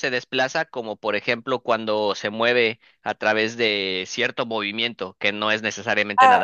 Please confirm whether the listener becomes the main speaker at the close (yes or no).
yes